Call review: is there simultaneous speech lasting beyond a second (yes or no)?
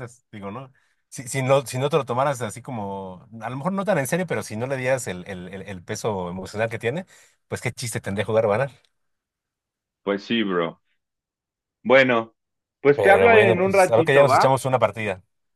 yes